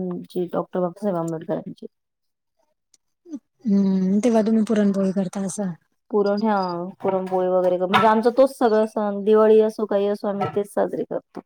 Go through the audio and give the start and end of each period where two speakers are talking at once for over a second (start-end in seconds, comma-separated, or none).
none